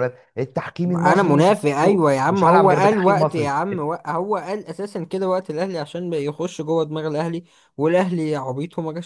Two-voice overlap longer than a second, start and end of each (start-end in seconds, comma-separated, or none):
0.9-3.5